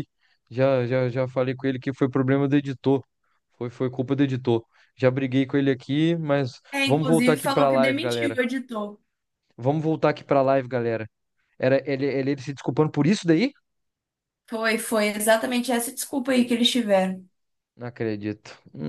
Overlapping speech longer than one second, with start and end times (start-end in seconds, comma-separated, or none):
6.7-8.4